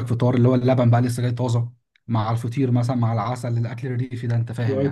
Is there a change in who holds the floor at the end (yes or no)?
yes